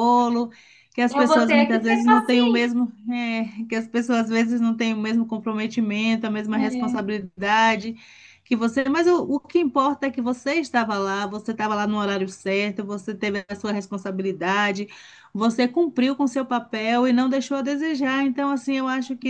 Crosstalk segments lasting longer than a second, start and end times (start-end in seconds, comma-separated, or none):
1.1-2.7